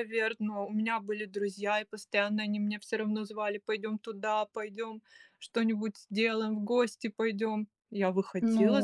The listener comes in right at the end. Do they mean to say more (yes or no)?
yes